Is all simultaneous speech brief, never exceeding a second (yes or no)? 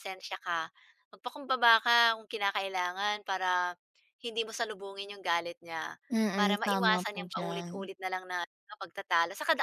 no